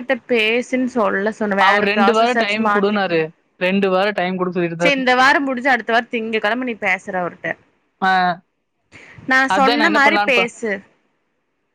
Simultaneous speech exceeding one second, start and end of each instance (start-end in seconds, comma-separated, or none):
1.7-3.2